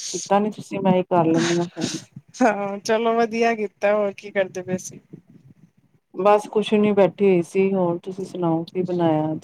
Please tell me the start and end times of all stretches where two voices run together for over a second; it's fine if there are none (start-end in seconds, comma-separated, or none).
none